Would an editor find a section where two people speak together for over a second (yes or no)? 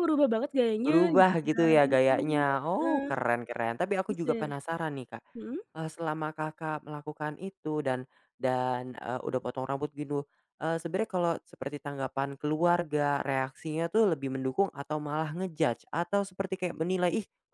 yes